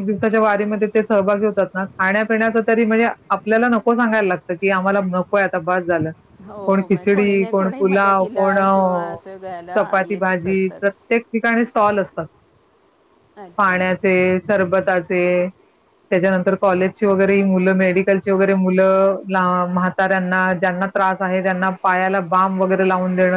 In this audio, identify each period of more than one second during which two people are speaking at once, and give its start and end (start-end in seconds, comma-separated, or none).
6.7-8.6, 9.8-11.1